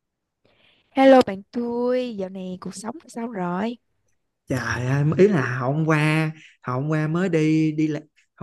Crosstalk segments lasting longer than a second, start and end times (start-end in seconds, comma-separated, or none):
none